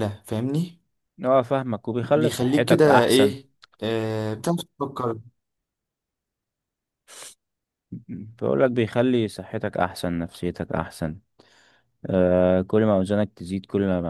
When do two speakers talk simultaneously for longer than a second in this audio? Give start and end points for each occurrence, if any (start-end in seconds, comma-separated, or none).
2.0-3.4